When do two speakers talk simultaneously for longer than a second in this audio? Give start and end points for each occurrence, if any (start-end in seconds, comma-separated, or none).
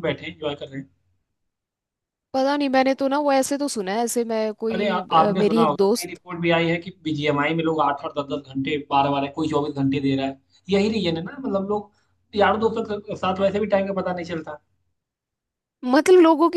4.7-6.2